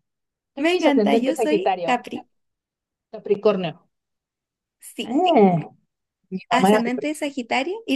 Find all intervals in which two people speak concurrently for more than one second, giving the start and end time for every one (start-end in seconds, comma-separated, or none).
0.6-1.9